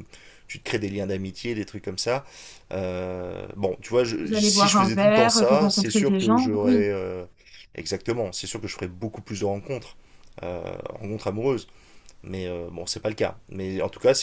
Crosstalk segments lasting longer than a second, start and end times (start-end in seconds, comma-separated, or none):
4.2-6.8